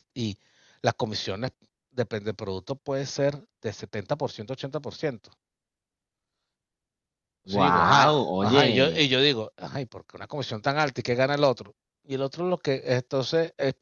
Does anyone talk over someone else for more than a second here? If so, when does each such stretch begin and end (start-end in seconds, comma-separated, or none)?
7.5-9.0